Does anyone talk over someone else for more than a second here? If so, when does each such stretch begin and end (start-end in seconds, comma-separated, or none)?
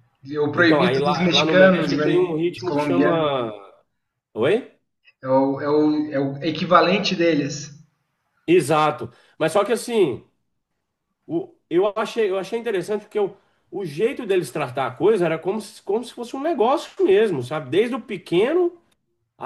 0.5-3.3